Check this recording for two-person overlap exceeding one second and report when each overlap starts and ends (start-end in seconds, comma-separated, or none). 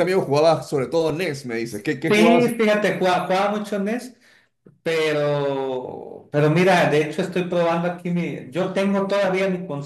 none